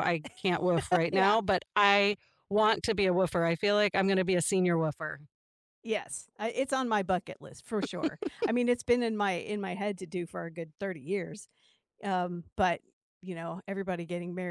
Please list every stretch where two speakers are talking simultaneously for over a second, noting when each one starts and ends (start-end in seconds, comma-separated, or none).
none